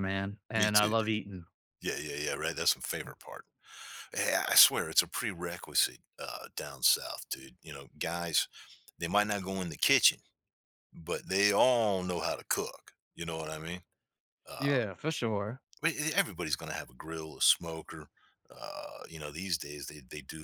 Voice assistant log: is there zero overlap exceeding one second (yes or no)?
yes